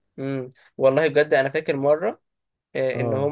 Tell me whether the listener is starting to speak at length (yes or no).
no